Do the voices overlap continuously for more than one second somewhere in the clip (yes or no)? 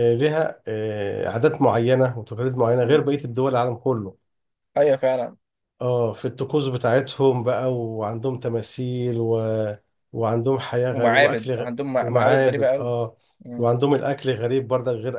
yes